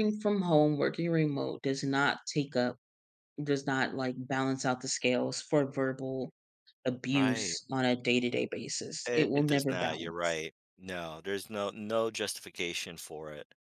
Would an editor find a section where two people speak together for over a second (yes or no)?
yes